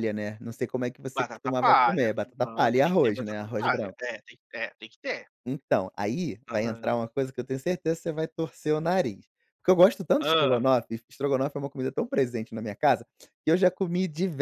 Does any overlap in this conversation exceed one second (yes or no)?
yes